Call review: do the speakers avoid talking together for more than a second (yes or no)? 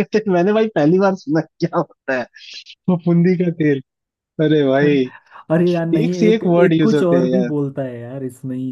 no